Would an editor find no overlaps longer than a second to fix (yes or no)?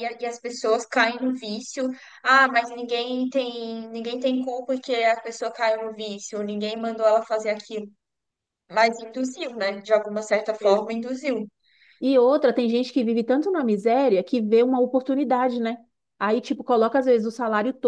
yes